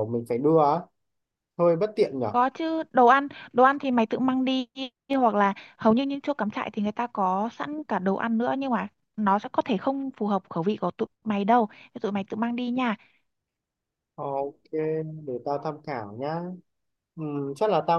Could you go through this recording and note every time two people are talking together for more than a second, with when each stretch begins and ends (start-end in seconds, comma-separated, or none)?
none